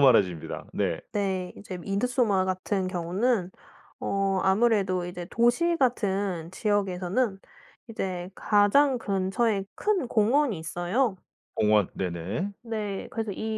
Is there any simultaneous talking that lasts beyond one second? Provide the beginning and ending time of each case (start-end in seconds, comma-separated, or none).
none